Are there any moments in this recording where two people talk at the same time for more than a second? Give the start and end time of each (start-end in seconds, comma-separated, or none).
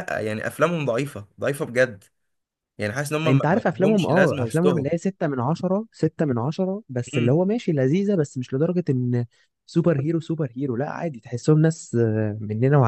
3.2-4.9